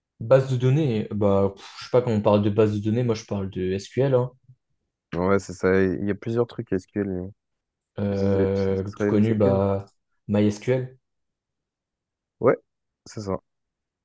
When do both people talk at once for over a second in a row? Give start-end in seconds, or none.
8.1-9.6